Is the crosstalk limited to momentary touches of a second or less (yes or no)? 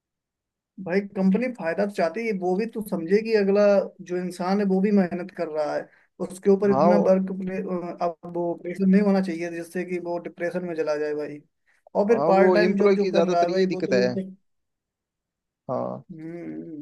no